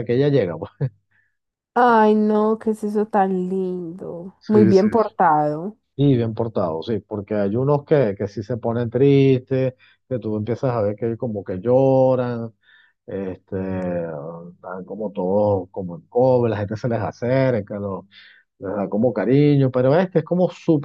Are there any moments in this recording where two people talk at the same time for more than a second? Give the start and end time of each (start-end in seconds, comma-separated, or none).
none